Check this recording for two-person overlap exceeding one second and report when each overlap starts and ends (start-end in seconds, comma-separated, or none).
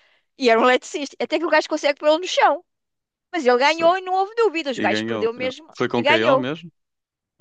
4.7-6.5